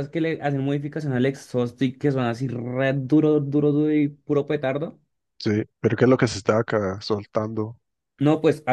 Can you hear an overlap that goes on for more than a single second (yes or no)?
no